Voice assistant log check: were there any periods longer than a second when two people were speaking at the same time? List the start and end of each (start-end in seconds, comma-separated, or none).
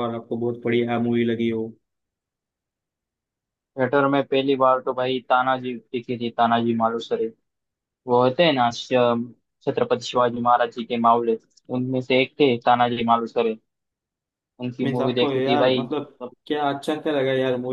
14.8-16.3